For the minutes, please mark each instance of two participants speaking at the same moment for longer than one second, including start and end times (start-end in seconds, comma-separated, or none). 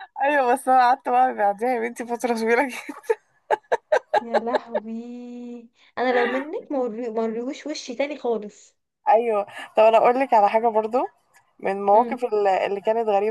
none